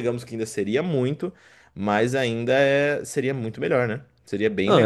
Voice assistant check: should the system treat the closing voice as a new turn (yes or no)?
yes